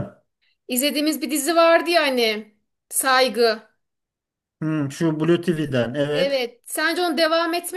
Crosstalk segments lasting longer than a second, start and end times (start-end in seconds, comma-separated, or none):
none